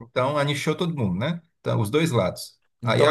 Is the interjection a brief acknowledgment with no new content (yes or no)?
yes